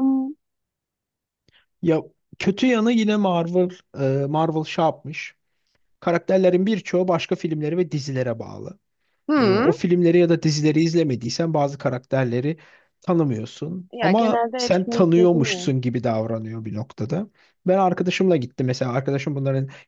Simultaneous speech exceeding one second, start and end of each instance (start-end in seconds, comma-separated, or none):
13.9-15.7